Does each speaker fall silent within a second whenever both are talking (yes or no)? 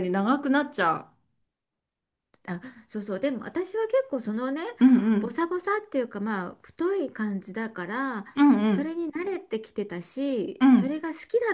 yes